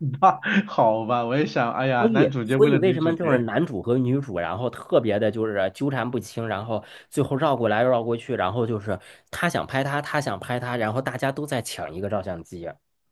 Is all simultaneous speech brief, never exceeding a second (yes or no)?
no